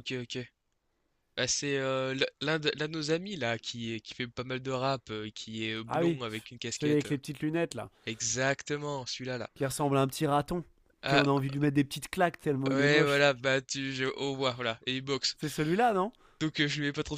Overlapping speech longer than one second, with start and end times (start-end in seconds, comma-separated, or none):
5.9-7.2